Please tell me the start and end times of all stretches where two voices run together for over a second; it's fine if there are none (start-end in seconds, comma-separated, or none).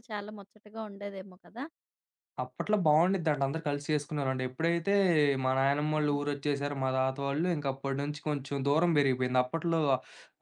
none